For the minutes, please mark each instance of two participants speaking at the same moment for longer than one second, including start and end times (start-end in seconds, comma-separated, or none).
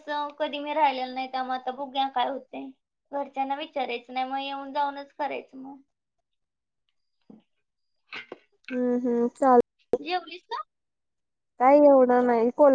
none